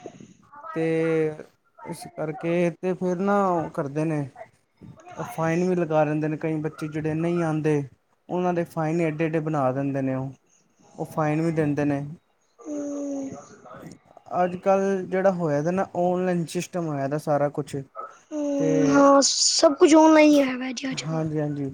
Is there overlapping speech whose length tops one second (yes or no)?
no